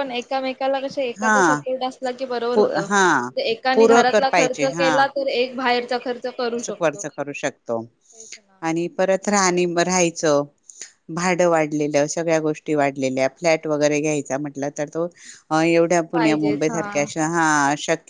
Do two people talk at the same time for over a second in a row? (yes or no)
yes